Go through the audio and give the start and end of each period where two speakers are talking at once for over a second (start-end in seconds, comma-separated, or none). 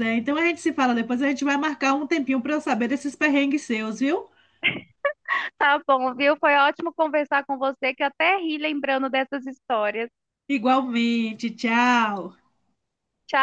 none